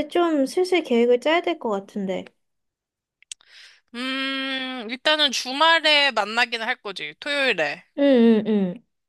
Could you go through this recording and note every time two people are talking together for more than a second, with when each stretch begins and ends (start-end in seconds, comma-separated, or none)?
none